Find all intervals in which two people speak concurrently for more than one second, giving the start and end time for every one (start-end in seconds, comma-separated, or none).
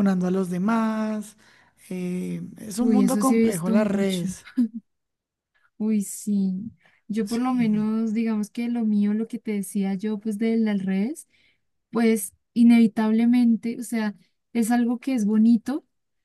2.8-4.3